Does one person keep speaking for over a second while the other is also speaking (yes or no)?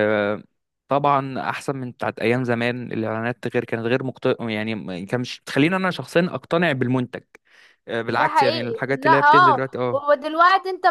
yes